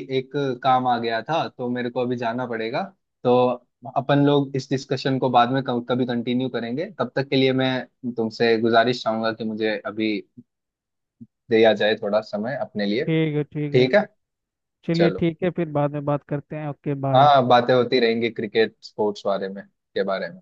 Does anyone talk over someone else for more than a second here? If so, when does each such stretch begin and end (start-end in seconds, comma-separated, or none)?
none